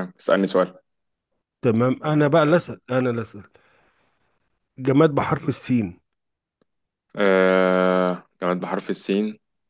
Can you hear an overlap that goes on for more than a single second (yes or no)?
no